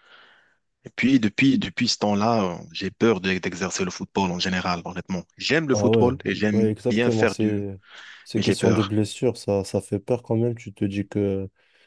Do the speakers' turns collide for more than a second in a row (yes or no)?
yes